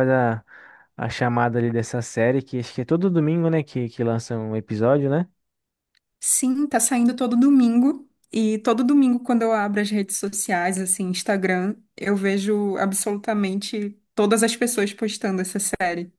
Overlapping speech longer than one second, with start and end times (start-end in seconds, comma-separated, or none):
none